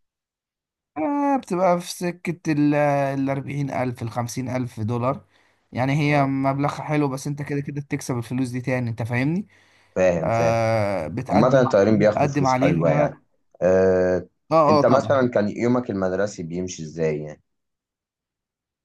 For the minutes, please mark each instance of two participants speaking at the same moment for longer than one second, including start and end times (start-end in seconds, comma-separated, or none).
11.3-13.2